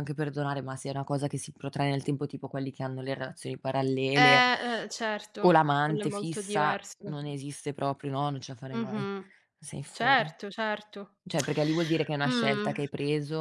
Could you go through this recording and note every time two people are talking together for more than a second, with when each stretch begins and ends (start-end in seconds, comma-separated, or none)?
5.4-7.2